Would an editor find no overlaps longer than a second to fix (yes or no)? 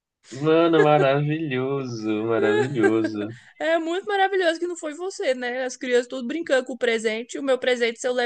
yes